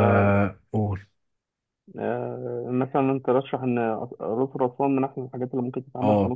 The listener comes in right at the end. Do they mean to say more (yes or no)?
yes